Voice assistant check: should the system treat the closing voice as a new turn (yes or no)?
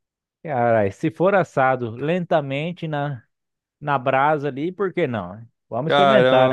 yes